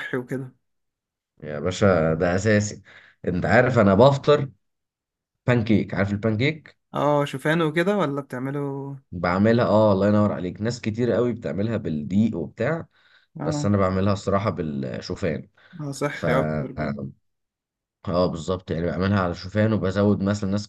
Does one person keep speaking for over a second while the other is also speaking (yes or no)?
no